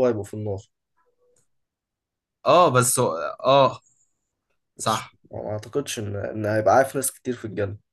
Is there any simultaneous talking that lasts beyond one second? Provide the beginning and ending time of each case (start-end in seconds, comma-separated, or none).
none